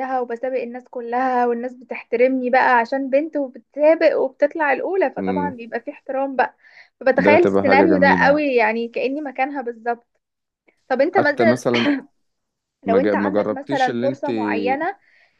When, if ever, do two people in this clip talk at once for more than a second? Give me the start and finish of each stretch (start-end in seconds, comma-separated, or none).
7.1-8.4, 12.8-14.3